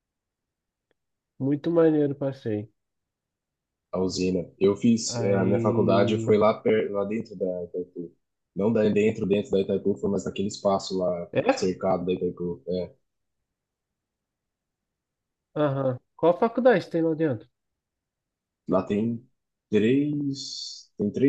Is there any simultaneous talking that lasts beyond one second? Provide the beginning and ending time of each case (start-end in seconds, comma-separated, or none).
5.1-6.4